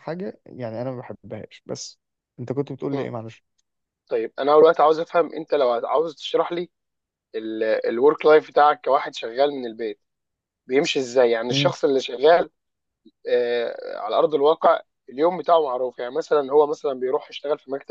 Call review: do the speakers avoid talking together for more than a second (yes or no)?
yes